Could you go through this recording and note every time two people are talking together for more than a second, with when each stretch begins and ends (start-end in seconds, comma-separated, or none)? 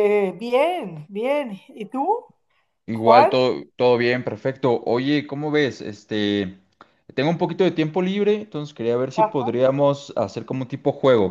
none